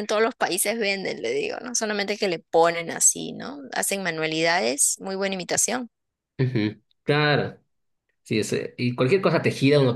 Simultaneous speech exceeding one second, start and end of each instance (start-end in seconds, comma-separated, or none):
none